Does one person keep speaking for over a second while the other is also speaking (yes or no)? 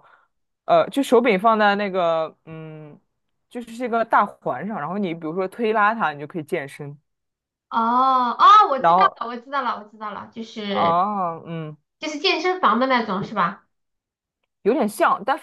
no